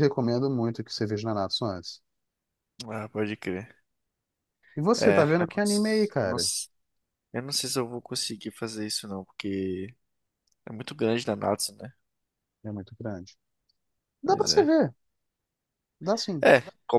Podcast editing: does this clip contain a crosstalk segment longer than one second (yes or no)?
yes